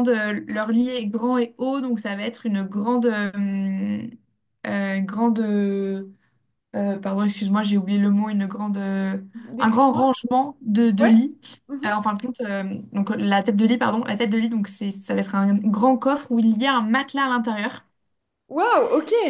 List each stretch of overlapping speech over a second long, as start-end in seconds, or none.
none